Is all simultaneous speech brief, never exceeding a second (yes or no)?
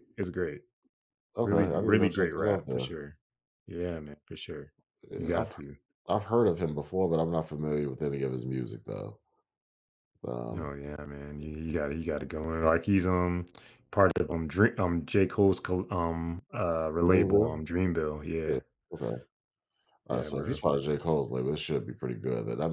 no